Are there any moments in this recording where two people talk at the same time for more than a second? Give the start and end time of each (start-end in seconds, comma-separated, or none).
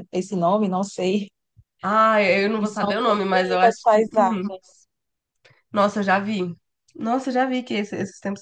2.6-4.5